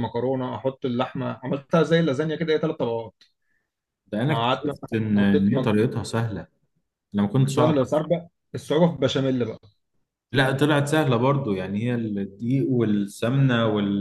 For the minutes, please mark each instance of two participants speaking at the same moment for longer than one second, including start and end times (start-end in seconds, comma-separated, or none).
4.3-5.7